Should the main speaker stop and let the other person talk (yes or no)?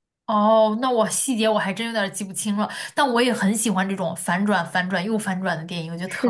yes